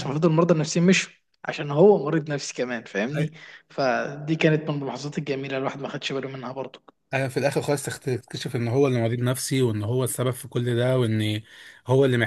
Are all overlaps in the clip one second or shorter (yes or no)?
yes